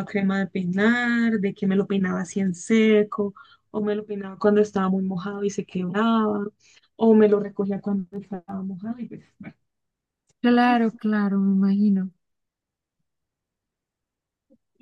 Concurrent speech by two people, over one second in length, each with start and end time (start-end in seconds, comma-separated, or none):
none